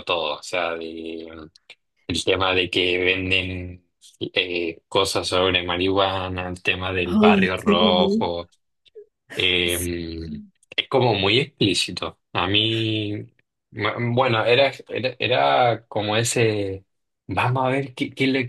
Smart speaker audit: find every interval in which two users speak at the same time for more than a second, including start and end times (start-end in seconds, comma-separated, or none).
7.0-8.3